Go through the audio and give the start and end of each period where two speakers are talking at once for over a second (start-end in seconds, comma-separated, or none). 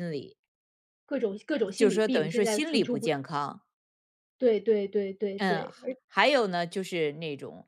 1.8-3.1